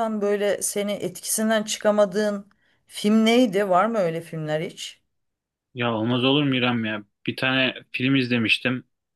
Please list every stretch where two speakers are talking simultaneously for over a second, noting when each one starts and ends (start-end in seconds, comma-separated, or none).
none